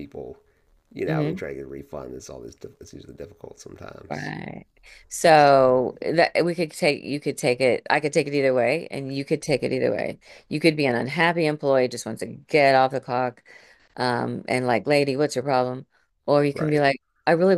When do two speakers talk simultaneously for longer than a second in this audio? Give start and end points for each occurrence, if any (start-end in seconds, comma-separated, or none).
none